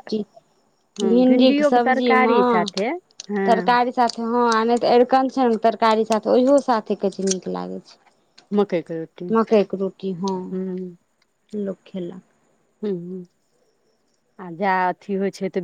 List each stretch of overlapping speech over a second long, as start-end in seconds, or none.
1.0-2.7